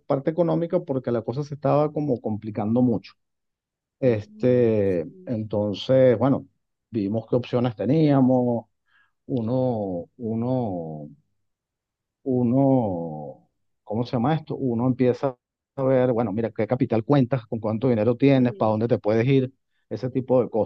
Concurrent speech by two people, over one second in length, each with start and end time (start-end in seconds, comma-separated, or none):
4.0-5.3